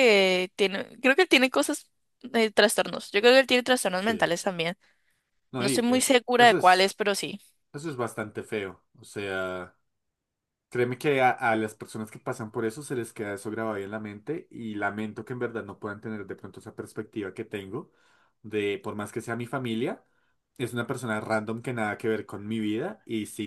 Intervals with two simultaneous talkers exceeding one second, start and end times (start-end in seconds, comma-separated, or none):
5.6-6.9